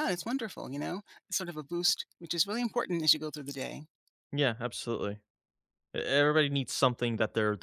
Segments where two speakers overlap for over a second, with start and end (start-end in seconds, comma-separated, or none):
none